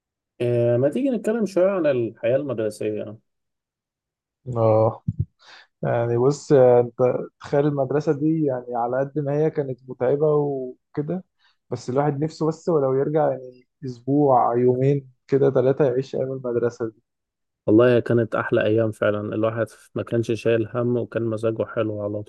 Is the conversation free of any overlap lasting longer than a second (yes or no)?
yes